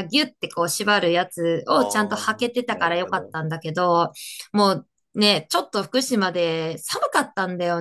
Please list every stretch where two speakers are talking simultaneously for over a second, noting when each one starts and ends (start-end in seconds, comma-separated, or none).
1.7-3.4